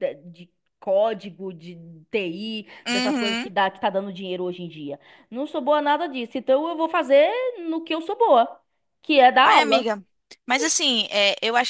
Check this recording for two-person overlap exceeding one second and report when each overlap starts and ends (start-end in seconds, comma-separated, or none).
none